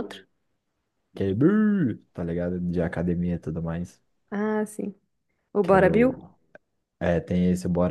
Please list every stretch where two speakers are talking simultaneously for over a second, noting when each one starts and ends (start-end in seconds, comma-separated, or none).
none